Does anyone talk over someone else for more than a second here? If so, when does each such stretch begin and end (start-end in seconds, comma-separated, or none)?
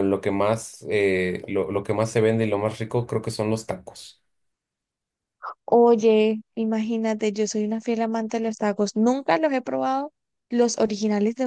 none